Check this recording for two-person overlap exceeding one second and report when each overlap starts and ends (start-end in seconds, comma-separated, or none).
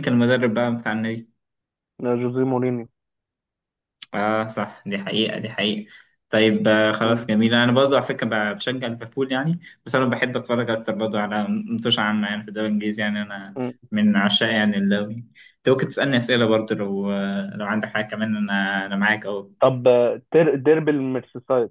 none